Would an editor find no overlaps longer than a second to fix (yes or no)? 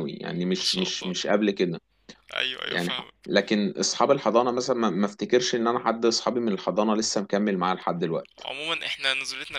yes